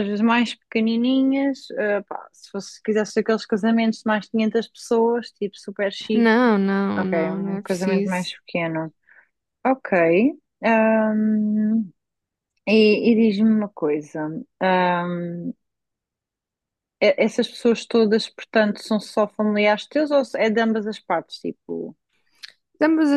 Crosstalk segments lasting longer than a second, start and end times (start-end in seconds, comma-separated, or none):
7.0-8.3